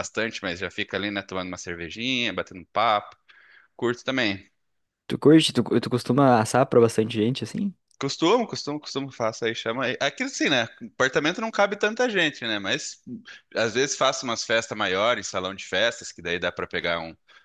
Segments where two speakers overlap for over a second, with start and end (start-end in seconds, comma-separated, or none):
none